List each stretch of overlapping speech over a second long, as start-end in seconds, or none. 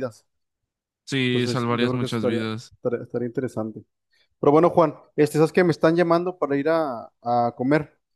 1.3-2.7